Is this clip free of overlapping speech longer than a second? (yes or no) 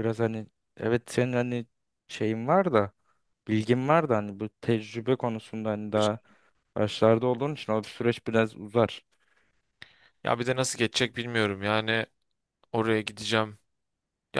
yes